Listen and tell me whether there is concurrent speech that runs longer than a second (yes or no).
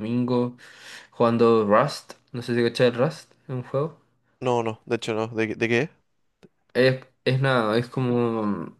no